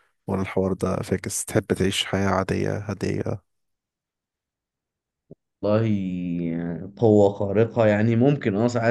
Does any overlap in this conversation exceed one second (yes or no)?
no